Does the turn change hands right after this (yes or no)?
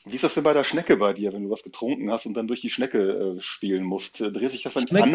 no